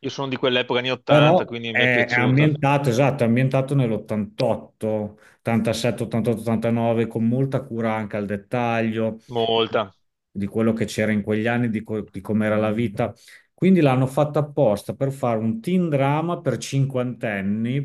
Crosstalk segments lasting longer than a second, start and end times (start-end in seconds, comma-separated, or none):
1.1-2.5